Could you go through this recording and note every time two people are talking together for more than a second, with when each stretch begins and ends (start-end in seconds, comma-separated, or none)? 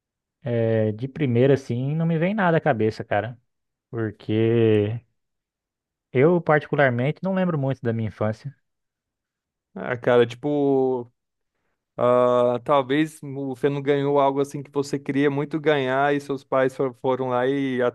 none